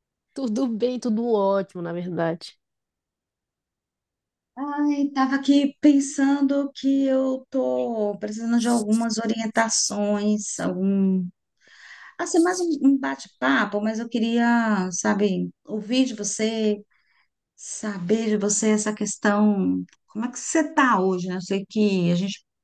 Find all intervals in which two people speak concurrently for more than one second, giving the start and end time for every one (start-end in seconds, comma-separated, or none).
none